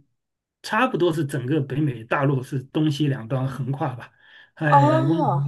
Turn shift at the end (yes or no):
no